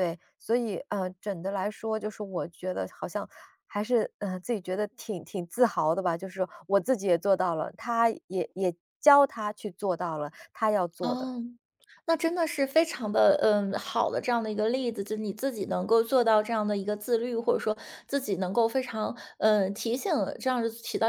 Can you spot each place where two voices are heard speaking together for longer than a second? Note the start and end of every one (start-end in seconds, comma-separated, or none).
none